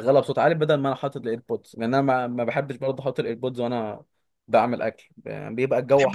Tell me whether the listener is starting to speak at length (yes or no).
no